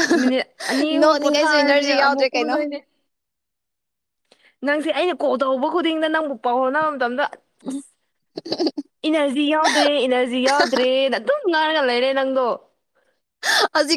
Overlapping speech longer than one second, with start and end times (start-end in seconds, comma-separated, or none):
0.9-2.6